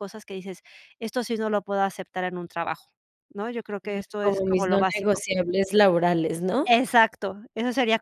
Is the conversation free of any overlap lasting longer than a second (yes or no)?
no